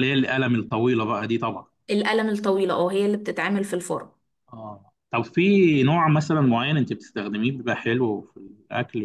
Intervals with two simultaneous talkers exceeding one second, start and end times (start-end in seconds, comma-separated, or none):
none